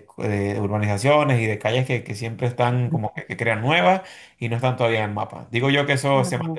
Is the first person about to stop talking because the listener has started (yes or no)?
no